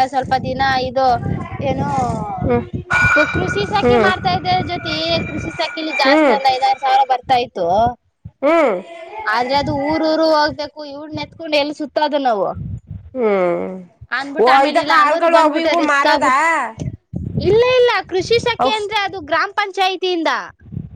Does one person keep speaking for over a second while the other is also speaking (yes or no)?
yes